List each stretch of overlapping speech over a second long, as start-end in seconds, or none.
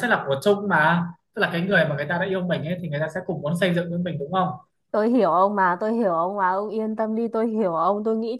none